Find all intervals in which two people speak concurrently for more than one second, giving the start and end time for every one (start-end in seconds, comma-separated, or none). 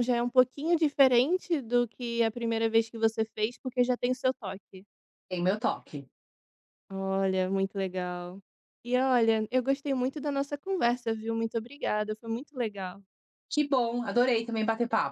none